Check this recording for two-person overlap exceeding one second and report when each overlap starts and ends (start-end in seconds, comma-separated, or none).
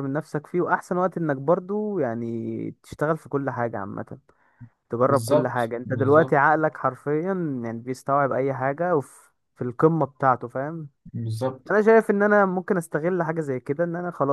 5.1-6.5